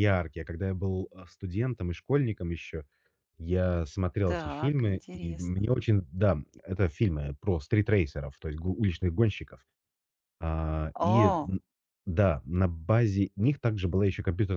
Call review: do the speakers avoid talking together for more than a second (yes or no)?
no